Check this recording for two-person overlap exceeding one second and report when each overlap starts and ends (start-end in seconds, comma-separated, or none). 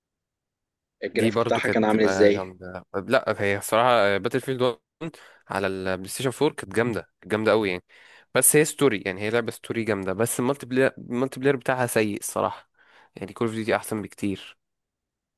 1.1-2.5